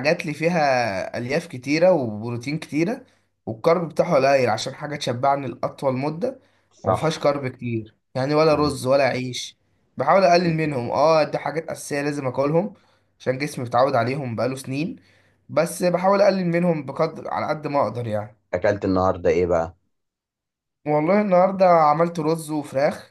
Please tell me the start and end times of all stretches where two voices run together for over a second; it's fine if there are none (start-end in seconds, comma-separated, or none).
none